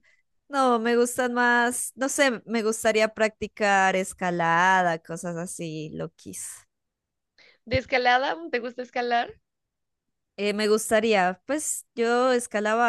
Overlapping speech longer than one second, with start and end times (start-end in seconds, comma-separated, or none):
none